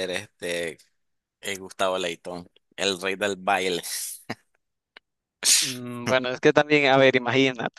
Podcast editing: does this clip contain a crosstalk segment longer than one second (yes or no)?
no